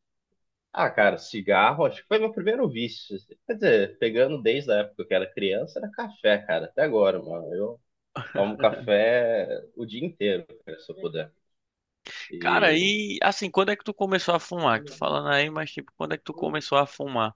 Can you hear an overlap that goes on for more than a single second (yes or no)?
no